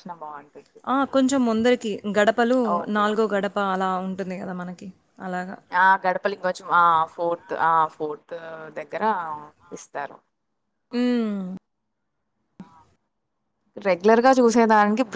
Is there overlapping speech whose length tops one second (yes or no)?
no